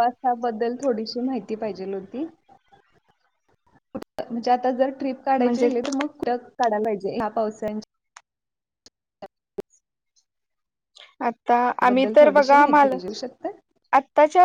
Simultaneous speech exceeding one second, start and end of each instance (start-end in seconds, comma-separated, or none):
11.9-13.5